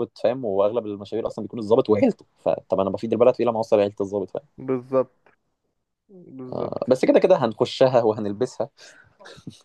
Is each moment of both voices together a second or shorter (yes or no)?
yes